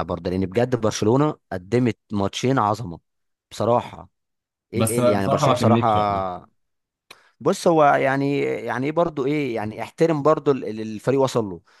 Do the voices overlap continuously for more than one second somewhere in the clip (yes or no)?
yes